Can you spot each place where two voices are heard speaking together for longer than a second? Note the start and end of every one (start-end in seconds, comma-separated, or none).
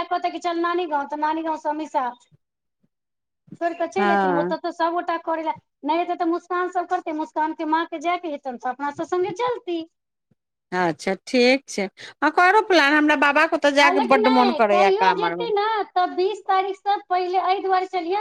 13.8-15.5